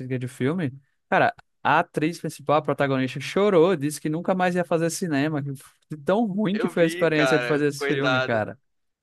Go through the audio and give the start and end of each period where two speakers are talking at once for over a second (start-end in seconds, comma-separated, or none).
6.5-8.4